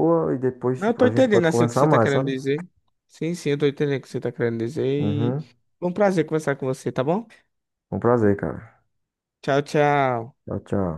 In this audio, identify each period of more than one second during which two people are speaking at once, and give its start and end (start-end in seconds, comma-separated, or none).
0.8-2.3